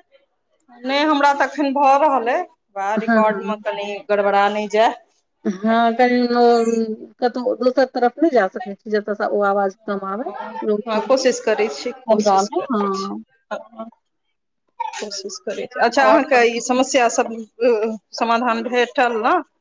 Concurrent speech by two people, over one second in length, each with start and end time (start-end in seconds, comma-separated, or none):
10.9-13.2